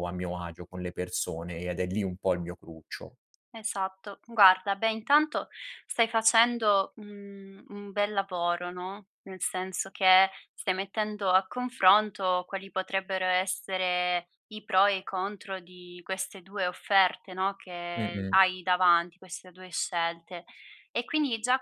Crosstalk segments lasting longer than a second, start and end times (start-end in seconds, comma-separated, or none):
none